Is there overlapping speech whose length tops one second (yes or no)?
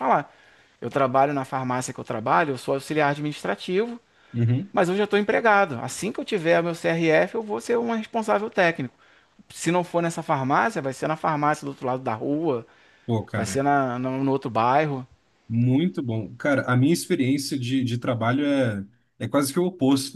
no